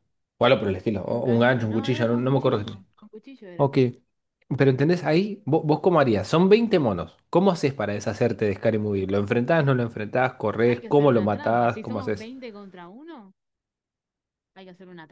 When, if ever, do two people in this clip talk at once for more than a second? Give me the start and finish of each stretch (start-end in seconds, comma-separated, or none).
1.1-2.8, 10.7-12.3